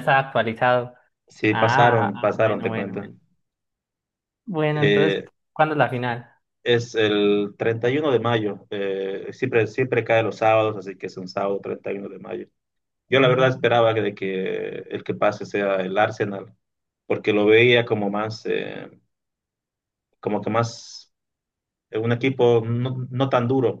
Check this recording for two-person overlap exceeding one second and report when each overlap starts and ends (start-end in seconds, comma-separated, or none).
1.5-3.1